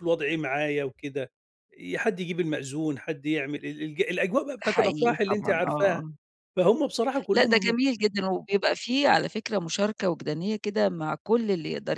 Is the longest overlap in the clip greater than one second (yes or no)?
yes